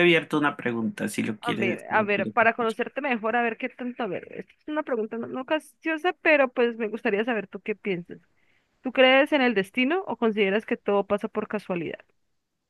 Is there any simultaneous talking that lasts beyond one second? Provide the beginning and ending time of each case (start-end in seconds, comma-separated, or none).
1.4-2.8